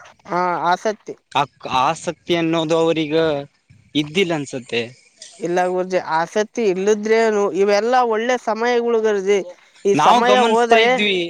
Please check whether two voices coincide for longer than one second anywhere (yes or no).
no